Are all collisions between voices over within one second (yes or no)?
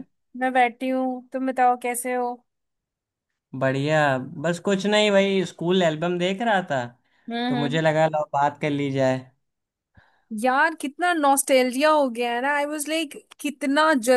yes